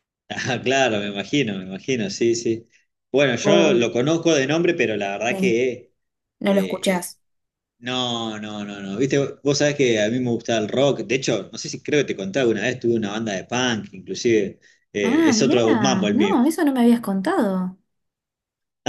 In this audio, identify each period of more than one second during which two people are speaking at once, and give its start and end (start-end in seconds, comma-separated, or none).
15.0-16.4